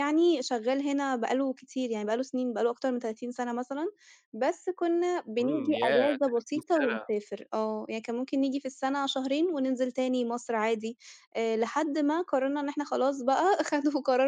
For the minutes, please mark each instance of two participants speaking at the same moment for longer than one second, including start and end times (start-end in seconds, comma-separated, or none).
5.4-7.1